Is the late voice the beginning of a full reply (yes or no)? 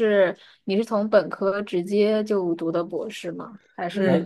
no